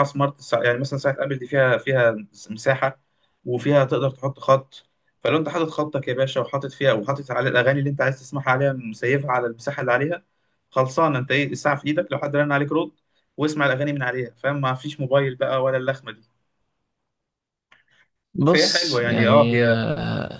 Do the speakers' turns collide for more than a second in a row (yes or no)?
yes